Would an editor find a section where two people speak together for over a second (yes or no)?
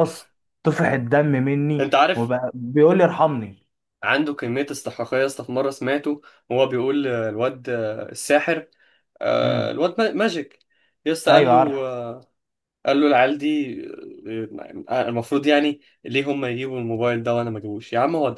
no